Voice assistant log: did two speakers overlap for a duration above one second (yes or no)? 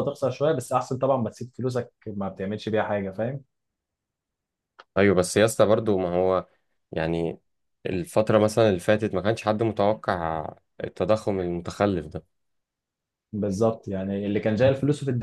no